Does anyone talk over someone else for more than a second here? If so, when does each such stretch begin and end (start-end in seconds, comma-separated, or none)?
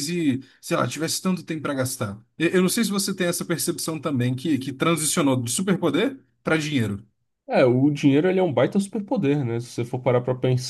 none